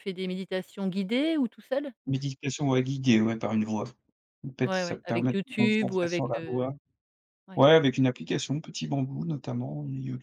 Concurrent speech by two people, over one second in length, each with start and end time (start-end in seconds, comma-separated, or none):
4.6-6.7